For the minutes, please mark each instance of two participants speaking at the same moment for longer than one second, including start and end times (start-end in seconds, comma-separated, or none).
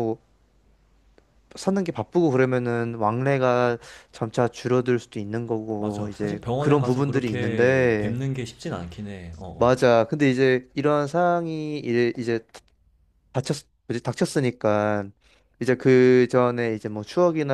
5.8-8.2